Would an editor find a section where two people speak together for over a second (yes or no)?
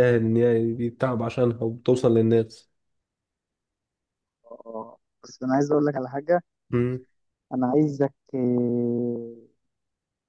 no